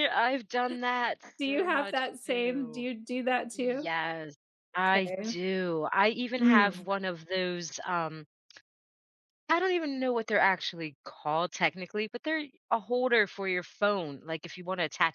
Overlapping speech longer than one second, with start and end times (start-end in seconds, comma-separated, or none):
1.4-2.9